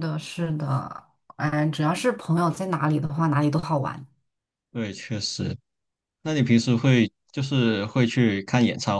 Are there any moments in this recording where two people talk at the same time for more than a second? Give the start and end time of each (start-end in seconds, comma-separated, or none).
none